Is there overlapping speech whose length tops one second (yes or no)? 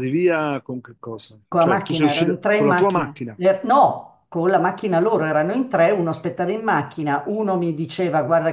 yes